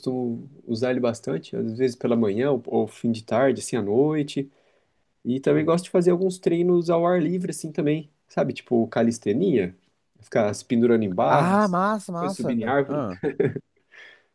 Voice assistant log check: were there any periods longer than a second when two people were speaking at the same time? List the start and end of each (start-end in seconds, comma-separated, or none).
11.3-13.0